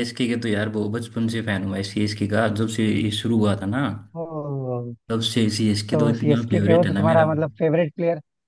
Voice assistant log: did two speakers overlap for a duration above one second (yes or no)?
yes